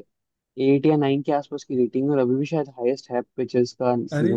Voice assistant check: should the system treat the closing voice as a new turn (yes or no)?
yes